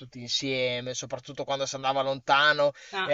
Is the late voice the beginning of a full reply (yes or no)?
no